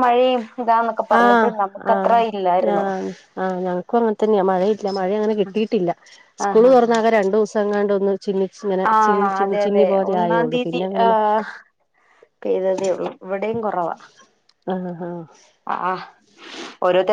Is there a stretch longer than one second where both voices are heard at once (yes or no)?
yes